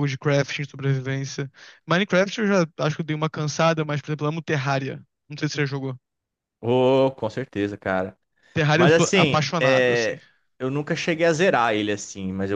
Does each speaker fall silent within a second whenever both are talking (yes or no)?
no